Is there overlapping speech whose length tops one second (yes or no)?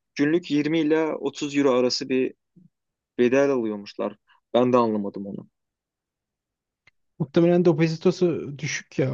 no